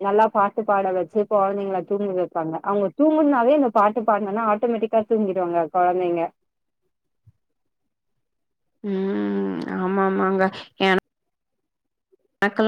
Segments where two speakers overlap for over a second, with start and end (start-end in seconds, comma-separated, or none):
none